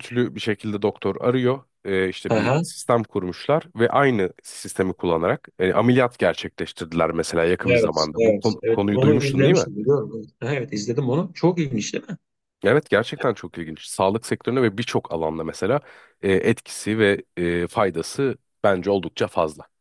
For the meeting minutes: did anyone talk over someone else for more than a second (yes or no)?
yes